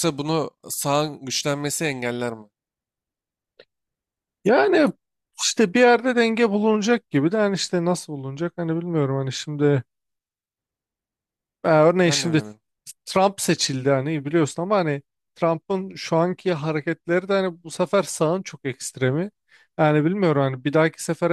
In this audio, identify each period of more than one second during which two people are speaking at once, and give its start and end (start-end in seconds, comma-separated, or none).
none